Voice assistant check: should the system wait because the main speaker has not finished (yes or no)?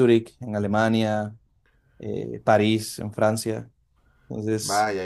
no